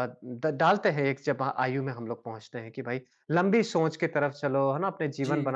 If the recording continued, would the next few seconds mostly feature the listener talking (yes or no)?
no